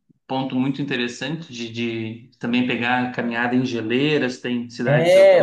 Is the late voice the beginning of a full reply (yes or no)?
yes